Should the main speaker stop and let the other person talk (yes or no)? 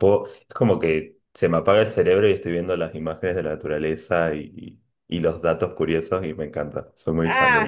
yes